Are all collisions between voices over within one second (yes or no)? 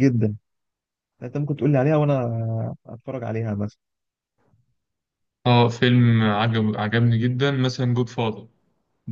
yes